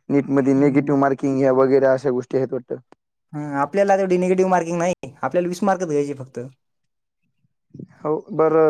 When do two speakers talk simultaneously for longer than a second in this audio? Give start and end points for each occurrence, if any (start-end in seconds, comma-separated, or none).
none